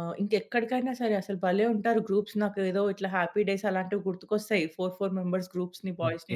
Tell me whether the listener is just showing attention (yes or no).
no